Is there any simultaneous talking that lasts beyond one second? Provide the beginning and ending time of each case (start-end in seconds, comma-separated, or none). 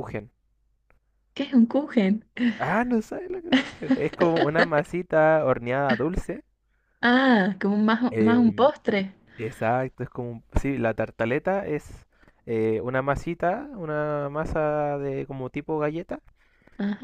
none